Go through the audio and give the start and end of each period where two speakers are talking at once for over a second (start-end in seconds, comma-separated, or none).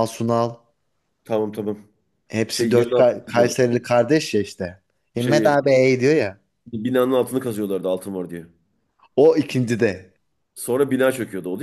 2.5-3.8